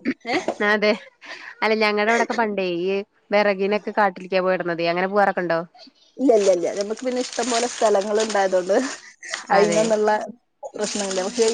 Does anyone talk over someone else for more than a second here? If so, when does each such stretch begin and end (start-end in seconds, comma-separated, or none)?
none